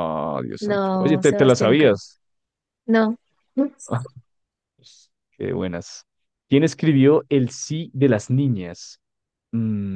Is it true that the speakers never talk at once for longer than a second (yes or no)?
no